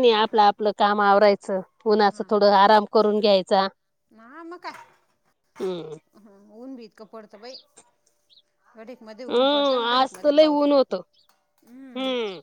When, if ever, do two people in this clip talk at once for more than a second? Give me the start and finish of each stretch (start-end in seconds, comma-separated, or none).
9.3-10.8